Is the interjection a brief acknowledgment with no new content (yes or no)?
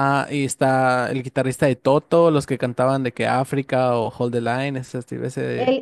no